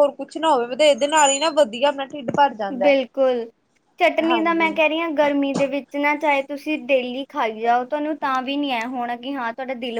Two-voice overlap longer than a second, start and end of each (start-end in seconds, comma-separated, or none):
none